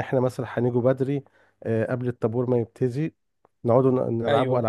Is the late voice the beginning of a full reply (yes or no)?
no